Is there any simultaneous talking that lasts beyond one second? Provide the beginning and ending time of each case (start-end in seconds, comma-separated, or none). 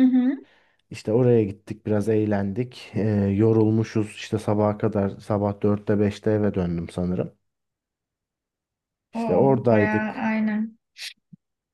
9.1-10.3